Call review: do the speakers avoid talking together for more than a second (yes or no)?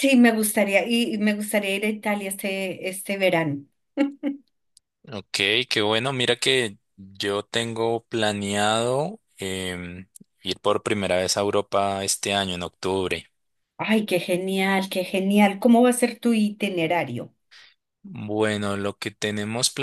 yes